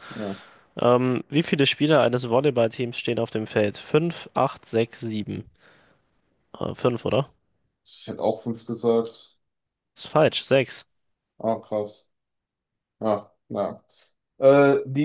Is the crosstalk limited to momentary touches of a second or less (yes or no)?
yes